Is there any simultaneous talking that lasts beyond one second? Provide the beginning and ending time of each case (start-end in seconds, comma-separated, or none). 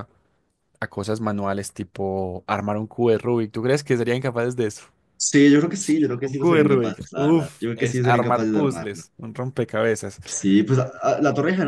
6.2-9.0